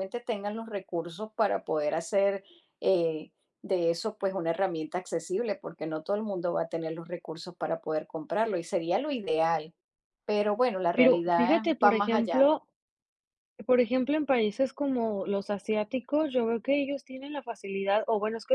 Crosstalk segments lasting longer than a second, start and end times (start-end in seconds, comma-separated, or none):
10.9-12.5